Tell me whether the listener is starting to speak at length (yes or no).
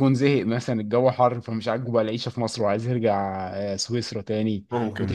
no